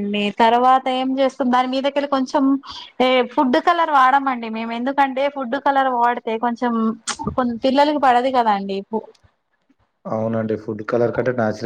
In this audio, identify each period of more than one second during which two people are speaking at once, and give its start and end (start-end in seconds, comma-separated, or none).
none